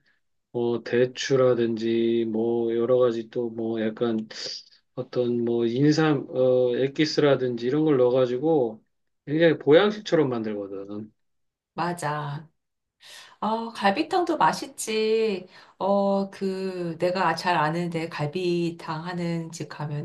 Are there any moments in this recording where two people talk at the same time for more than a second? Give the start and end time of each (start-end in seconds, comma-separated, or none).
none